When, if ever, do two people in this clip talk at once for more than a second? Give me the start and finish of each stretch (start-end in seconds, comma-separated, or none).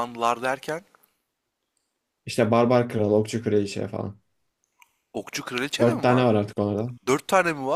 none